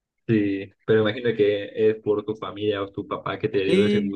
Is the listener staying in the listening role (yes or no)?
no